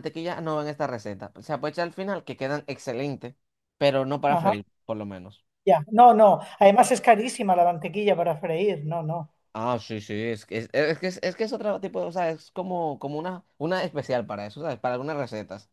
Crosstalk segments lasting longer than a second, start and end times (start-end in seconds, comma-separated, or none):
none